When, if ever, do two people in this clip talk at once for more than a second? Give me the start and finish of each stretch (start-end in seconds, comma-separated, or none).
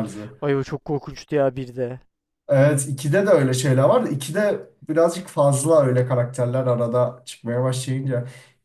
none